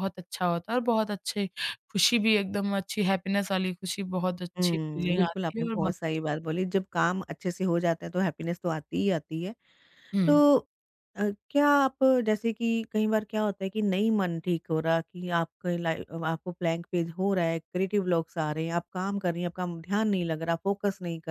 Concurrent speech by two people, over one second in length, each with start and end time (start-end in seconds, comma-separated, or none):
4.6-6.2